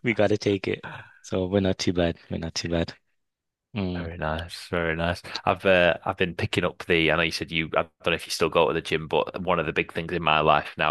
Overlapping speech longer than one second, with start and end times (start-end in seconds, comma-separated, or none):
none